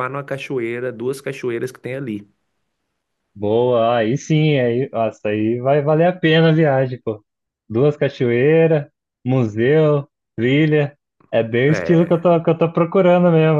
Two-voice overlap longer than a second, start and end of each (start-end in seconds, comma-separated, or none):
none